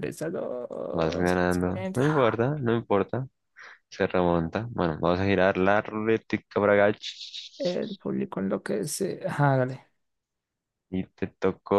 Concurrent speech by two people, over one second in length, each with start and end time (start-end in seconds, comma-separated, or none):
0.9-2.4